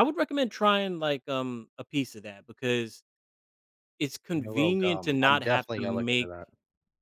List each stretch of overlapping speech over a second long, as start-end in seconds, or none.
4.4-6.3